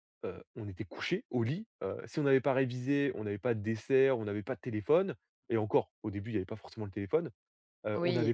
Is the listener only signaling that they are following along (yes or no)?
yes